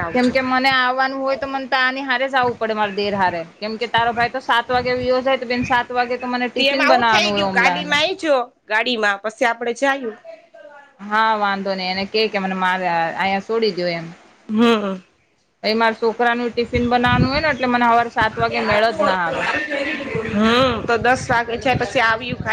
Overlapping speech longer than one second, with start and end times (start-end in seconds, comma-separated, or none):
6.6-8.0